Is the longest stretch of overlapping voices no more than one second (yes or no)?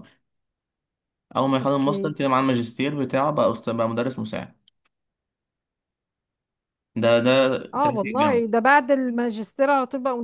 yes